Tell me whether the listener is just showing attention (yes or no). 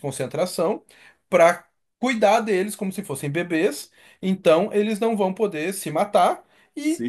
yes